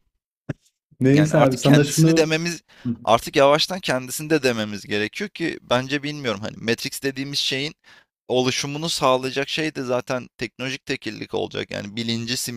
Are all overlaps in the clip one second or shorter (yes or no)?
no